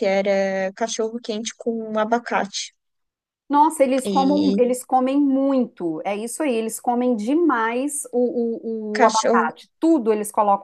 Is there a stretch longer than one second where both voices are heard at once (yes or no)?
no